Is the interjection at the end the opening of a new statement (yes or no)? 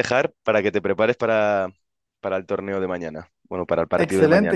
yes